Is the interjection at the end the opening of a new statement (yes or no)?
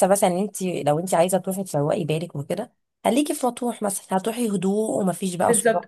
yes